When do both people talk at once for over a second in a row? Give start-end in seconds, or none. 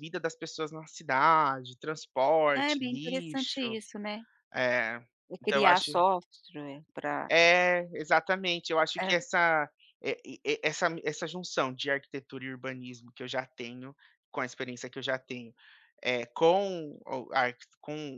2.6-3.8